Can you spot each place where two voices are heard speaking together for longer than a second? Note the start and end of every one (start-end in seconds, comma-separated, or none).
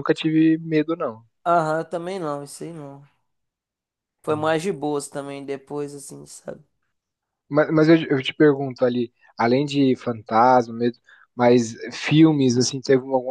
none